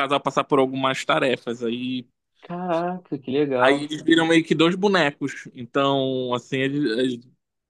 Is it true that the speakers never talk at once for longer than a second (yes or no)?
yes